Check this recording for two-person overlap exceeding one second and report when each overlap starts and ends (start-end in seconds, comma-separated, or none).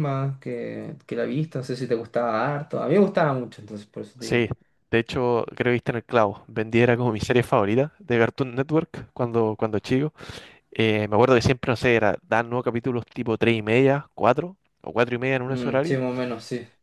none